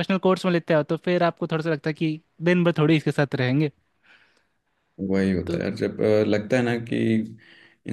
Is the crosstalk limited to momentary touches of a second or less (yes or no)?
yes